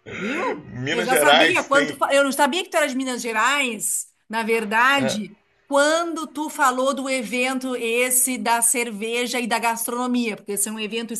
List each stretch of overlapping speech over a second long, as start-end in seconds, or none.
0.6-2.0